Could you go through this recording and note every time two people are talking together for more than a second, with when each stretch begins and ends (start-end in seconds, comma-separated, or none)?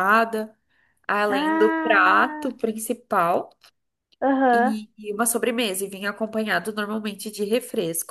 1.3-2.5